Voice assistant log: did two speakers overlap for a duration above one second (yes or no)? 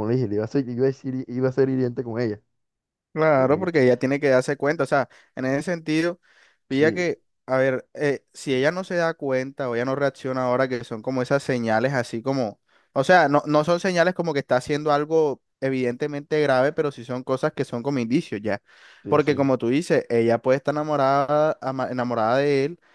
no